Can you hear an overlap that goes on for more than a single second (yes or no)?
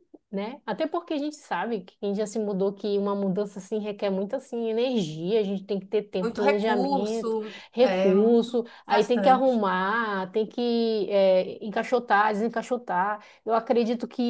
yes